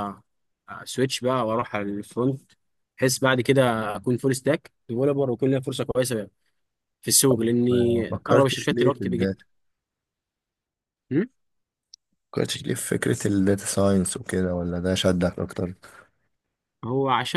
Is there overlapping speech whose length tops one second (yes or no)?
yes